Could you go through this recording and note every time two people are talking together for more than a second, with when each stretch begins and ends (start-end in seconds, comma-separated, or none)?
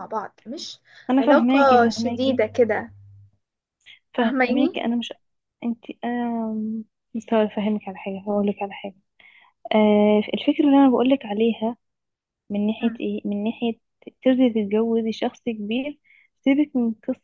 1.2-2.4